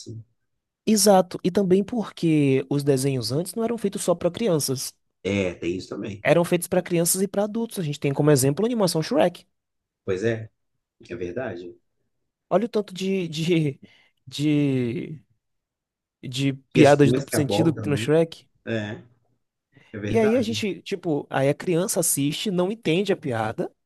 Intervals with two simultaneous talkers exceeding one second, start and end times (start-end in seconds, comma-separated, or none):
16.7-18.1